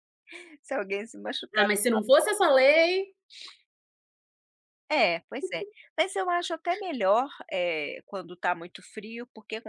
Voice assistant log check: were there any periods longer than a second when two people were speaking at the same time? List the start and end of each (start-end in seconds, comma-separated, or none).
none